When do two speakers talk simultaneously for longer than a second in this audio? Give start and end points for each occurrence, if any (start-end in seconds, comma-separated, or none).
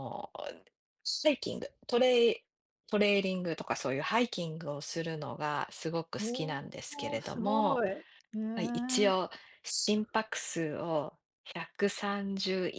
6.2-7.8